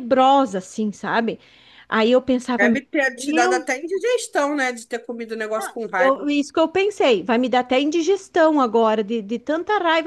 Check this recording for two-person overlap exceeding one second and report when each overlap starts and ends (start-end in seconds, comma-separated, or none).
none